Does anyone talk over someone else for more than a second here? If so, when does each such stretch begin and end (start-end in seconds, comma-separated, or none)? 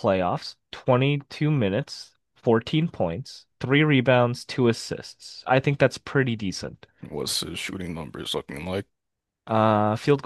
none